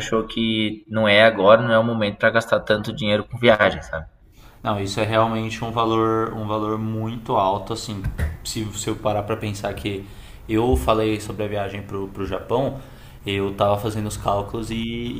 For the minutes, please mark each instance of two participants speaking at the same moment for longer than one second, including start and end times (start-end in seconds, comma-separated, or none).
none